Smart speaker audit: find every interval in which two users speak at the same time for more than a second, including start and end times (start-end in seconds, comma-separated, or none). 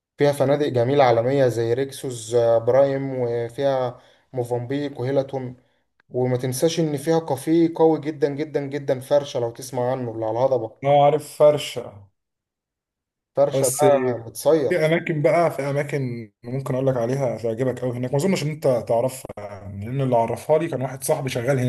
none